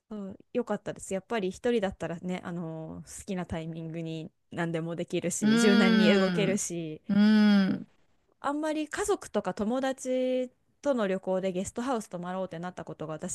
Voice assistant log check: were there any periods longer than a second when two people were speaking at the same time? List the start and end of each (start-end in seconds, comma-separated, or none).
5.4-6.6